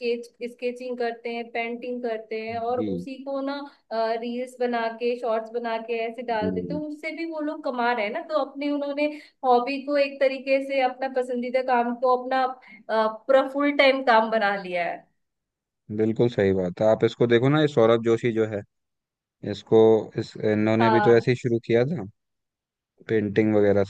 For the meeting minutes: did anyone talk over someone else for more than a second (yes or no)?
no